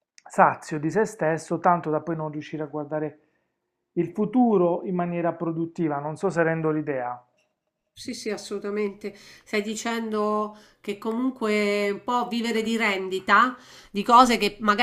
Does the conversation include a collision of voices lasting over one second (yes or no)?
no